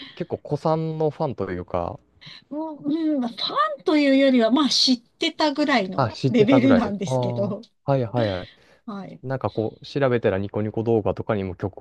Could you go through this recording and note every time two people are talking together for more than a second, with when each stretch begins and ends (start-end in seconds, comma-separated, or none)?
6.0-7.6